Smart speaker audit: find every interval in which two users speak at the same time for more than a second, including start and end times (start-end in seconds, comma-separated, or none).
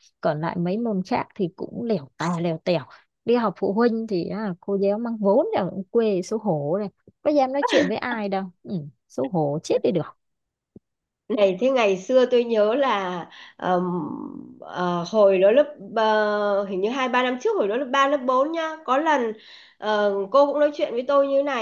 none